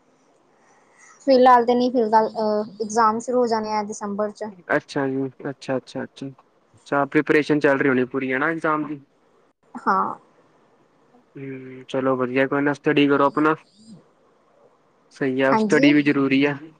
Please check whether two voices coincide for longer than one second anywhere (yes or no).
no